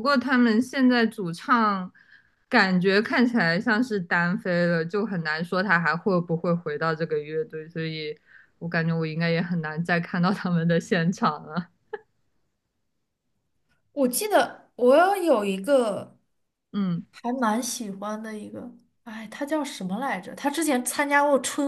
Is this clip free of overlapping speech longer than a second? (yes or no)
yes